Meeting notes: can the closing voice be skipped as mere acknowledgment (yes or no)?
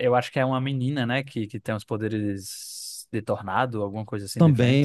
no